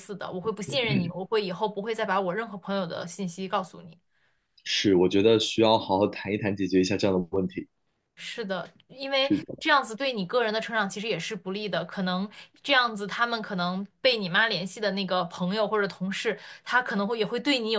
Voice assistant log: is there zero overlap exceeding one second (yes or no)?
yes